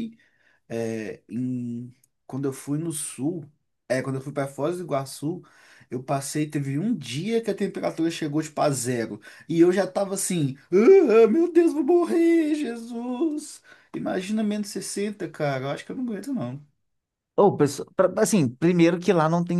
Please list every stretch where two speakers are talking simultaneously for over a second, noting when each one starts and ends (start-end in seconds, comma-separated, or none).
none